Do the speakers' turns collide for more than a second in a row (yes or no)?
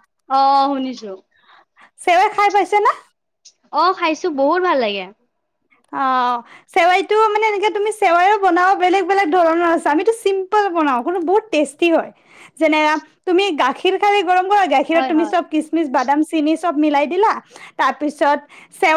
no